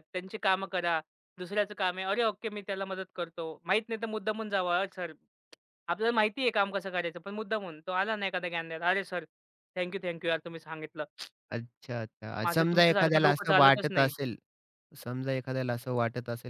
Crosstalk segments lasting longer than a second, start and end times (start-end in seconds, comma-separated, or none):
12.4-14.1